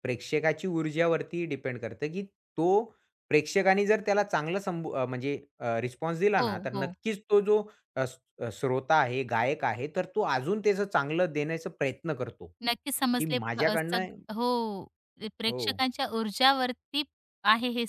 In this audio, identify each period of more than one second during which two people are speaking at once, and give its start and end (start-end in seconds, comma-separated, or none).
12.6-14.1